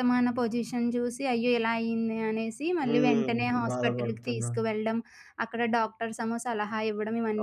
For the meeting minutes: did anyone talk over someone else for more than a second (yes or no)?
yes